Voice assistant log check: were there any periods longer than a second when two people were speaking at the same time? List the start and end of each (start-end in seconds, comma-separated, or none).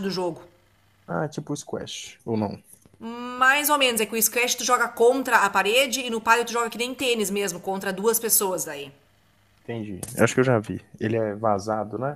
none